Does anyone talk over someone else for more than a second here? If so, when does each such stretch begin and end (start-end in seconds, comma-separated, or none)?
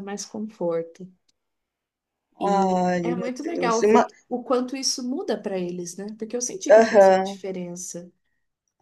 2.4-4.1